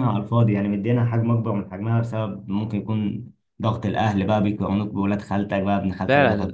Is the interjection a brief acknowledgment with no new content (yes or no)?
no